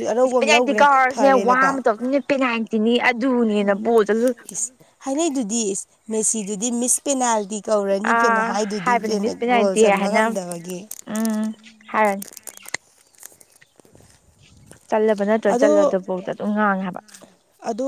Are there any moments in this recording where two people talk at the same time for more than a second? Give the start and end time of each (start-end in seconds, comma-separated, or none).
8.0-10.2